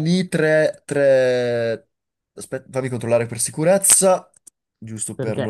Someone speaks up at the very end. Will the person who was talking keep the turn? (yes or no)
no